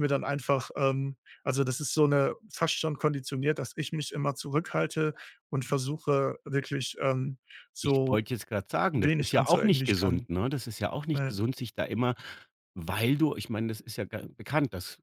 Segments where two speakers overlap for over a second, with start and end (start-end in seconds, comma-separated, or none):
8.9-10.3